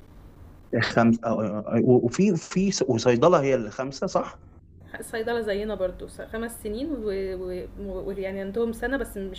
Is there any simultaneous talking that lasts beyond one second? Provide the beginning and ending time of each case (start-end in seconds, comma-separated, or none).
none